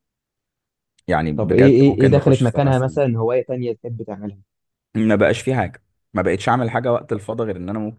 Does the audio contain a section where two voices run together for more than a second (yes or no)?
yes